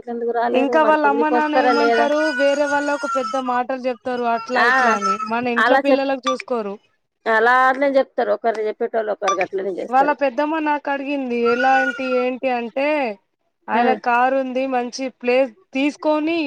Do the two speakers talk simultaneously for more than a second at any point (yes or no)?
yes